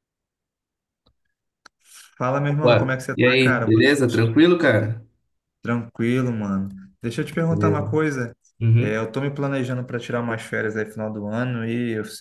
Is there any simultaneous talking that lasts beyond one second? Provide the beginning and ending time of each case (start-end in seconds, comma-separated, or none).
2.6-4.3